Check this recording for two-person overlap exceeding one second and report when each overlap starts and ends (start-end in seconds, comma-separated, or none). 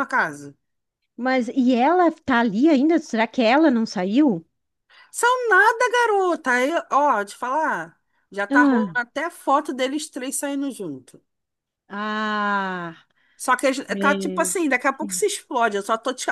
13.9-15.3